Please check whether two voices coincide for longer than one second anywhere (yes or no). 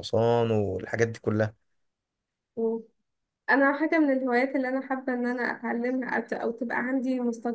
no